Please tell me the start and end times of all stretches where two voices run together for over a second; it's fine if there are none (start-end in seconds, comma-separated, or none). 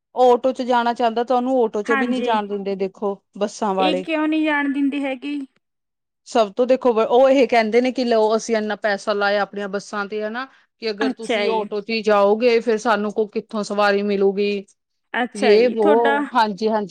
none